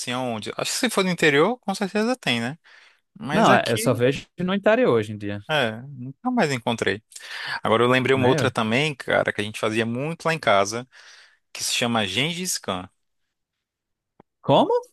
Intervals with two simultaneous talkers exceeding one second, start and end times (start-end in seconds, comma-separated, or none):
none